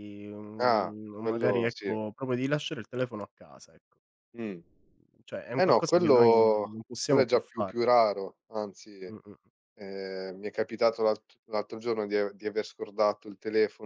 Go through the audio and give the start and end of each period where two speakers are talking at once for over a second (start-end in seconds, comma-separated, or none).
0.6-2.0, 5.6-7.7